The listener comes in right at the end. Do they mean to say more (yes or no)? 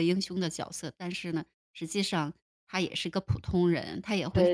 no